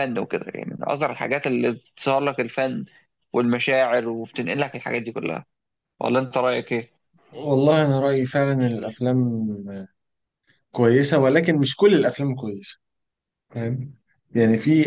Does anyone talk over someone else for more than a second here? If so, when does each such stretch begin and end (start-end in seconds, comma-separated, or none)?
none